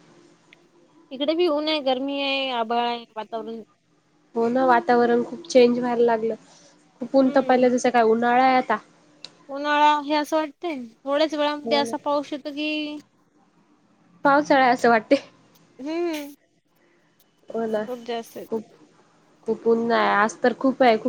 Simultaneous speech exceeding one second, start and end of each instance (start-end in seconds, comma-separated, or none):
none